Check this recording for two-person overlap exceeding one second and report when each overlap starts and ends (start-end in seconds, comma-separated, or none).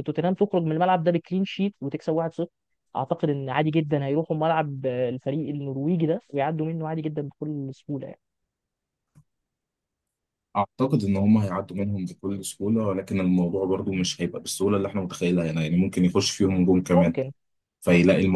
none